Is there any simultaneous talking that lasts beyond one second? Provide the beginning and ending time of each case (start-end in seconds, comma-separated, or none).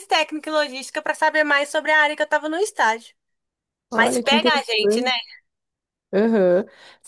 3.9-5.1